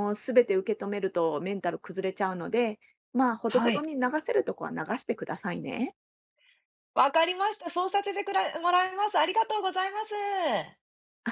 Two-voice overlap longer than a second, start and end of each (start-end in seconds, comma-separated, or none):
none